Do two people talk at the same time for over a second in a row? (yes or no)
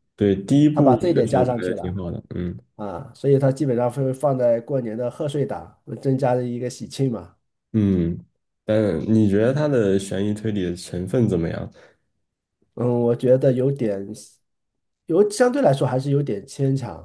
yes